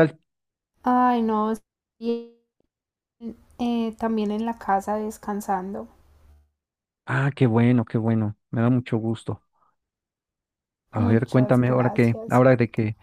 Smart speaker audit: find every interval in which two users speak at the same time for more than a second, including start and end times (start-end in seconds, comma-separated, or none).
10.9-12.4